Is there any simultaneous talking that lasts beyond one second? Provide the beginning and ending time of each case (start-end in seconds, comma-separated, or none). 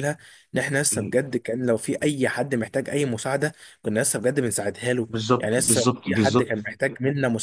5.1-6.7